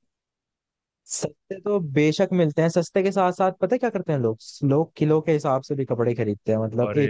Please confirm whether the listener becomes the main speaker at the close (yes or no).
no